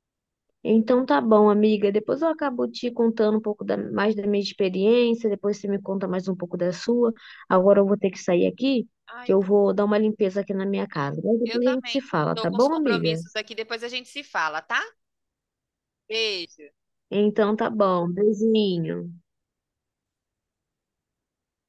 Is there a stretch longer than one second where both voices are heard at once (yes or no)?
yes